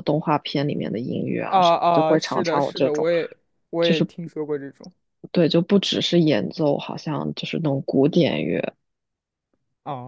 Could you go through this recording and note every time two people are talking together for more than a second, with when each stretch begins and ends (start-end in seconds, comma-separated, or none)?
1.5-3.1